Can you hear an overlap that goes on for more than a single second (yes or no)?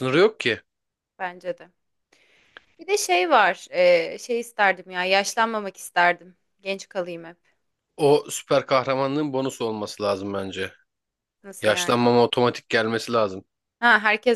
no